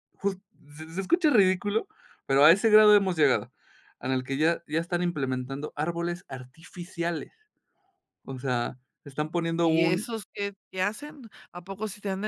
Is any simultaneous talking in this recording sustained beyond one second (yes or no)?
no